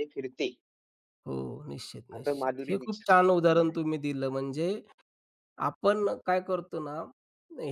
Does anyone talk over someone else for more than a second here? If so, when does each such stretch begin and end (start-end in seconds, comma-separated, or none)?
2.1-3.7